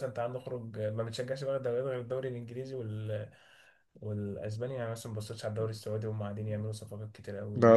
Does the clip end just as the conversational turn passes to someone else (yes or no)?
no